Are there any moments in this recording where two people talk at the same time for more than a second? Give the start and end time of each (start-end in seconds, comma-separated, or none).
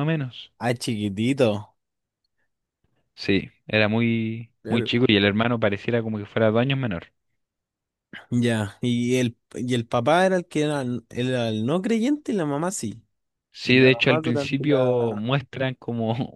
13.7-15.2